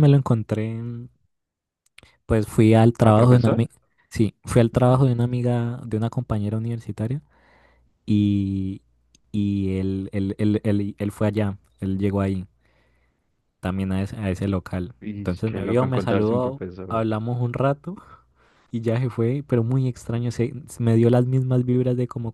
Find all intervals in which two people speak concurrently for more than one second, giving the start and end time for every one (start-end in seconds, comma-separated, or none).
15.0-17.0